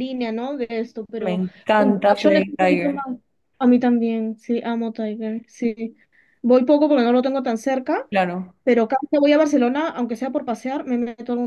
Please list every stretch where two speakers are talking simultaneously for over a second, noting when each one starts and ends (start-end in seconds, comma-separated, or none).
1.2-3.0